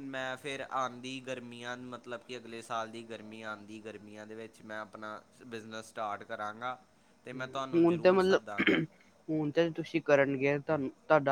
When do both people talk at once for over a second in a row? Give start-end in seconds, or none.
7.3-8.8